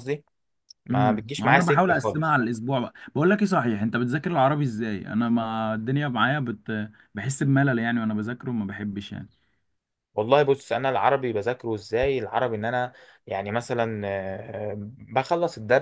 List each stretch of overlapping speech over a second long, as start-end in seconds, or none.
0.9-2.4